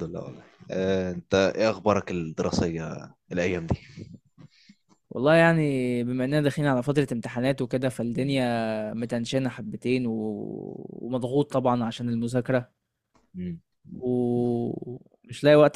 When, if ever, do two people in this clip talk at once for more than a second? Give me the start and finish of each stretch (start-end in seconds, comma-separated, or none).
none